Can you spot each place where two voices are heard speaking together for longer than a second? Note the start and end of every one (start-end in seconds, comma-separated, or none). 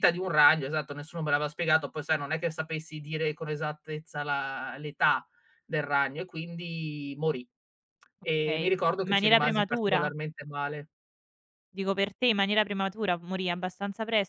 8.4-10.1